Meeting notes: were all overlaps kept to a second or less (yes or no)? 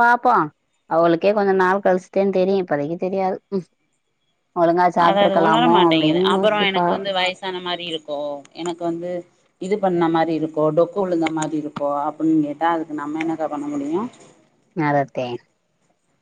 yes